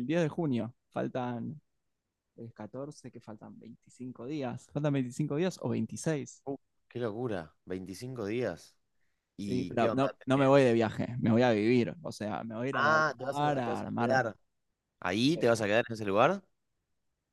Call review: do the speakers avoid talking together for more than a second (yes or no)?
no